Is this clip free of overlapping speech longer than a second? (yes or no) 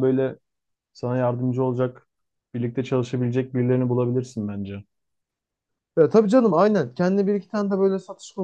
yes